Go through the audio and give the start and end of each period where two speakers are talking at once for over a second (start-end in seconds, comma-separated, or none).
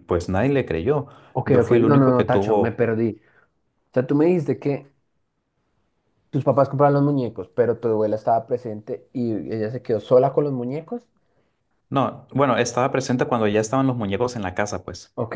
1.4-2.8